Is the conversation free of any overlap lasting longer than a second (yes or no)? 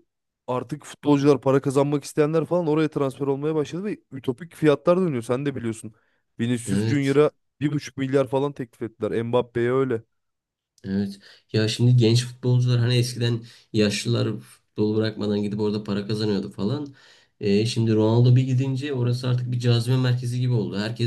yes